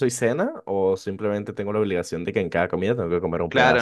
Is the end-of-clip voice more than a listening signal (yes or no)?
yes